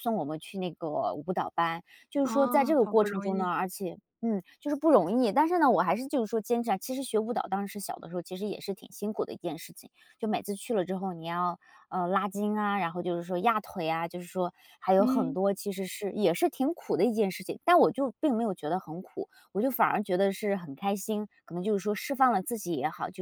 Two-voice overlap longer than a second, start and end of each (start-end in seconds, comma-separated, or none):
2.2-3.5